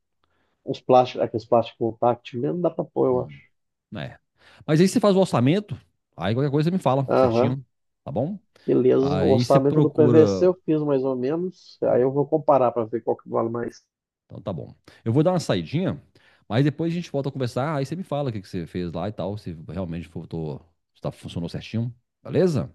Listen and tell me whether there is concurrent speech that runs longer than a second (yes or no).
yes